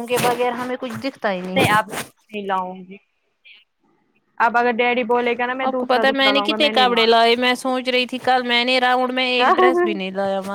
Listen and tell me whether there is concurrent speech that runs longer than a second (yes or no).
yes